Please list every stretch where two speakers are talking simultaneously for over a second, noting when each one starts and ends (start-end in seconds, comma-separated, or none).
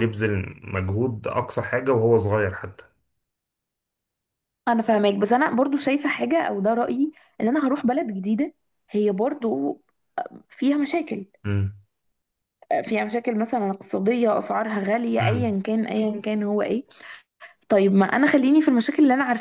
none